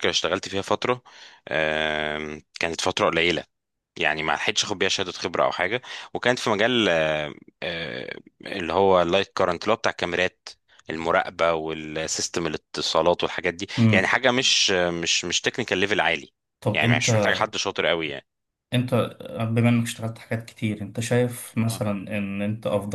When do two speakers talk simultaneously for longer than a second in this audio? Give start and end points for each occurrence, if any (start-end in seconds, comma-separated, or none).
none